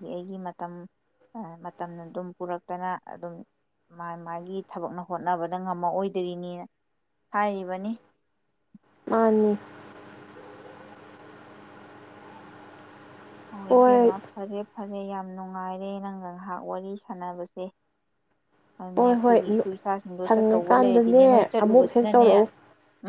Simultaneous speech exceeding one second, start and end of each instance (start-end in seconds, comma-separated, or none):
20.3-22.3